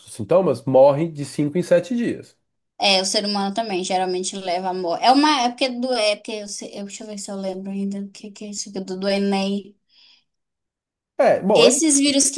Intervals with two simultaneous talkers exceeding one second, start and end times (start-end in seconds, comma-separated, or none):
none